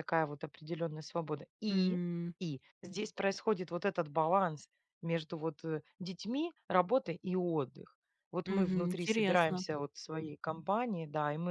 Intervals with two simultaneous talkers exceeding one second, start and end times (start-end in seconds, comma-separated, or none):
8.4-9.6